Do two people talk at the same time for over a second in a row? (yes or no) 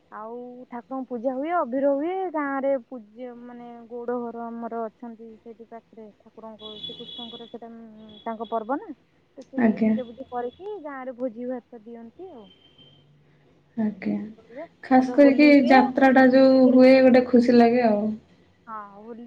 yes